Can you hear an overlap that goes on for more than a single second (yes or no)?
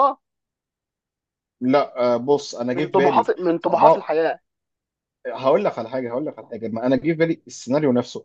yes